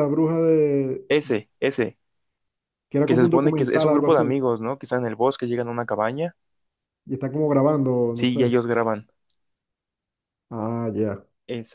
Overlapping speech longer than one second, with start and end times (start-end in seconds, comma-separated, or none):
3.0-4.2